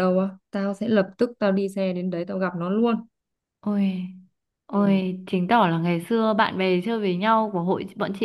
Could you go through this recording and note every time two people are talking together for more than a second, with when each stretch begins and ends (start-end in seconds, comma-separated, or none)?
none